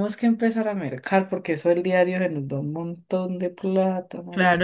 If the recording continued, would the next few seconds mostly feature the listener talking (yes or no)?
yes